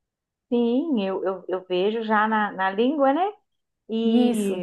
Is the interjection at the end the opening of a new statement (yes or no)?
no